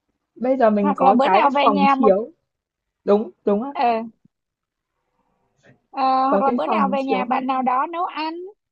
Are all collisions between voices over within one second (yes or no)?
no